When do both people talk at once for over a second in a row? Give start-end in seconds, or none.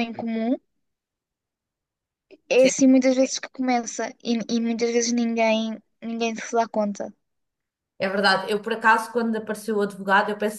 none